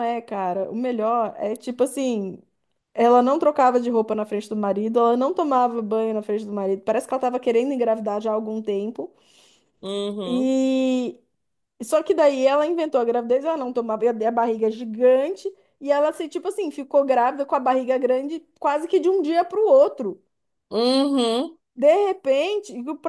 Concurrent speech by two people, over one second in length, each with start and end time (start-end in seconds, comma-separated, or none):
none